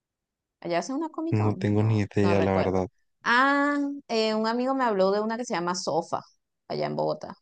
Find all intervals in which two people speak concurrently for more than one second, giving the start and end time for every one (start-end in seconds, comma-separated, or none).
1.3-2.8